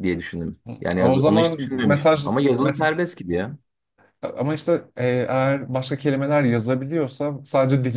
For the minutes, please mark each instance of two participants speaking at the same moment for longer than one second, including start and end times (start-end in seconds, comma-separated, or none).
0.7-2.9